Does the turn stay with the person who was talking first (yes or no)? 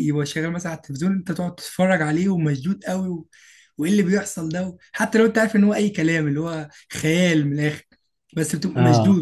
yes